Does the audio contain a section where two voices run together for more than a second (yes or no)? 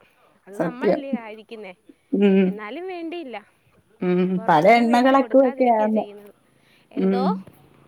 yes